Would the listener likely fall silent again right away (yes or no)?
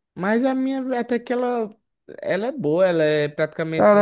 no